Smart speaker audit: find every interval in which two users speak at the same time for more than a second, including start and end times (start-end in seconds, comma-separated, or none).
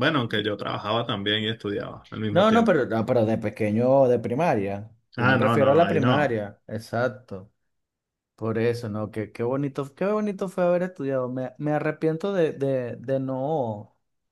5.2-6.4